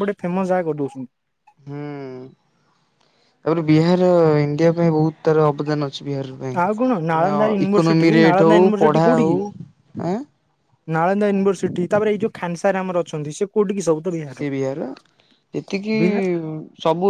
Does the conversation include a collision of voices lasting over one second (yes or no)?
yes